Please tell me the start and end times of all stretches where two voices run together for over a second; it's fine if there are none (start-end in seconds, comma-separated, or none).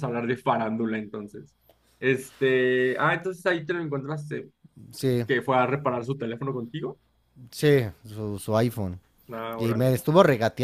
none